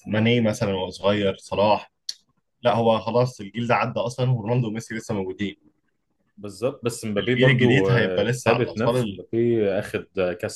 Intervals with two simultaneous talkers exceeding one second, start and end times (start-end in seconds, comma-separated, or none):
7.2-9.2